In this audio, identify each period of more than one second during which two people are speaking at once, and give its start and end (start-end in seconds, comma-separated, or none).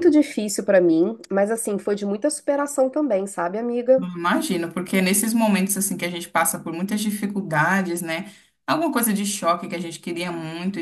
none